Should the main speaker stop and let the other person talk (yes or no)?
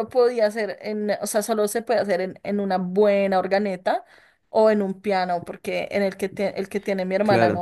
no